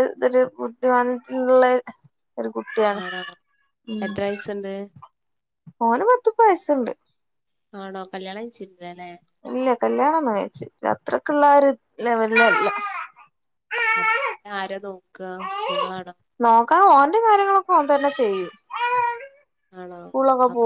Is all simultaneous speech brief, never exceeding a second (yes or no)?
yes